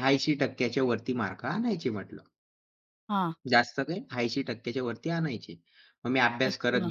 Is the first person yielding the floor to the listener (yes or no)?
no